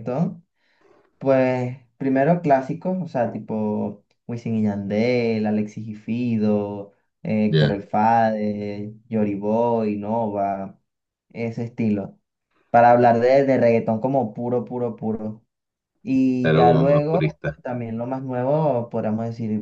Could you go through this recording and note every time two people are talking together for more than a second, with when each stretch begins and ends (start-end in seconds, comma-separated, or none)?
16.4-17.6